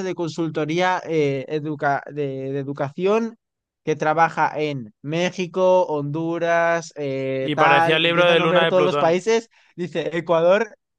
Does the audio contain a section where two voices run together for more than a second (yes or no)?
yes